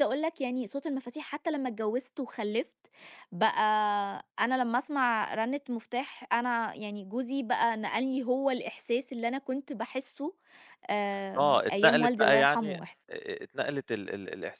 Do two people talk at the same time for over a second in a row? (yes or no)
yes